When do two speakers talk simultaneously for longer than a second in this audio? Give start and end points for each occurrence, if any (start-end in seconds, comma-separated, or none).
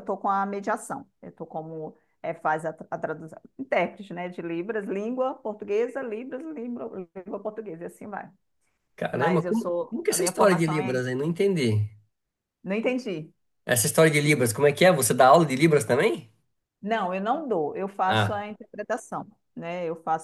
9.1-11.0